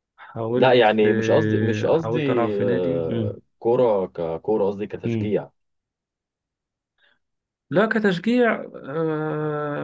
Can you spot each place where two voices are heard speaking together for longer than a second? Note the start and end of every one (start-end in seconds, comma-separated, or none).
0.6-3.4